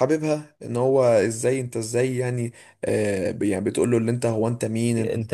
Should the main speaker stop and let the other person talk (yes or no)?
no